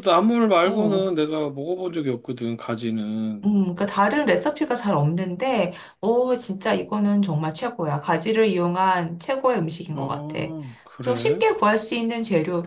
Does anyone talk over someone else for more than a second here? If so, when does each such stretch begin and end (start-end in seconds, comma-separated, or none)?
none